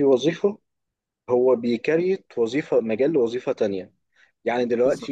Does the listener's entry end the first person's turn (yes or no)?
no